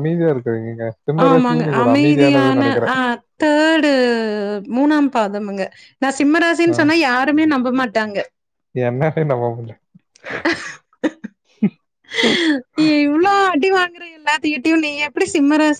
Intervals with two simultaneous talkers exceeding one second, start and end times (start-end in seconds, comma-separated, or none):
1.3-3.0